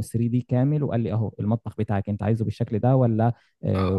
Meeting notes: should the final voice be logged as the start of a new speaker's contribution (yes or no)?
yes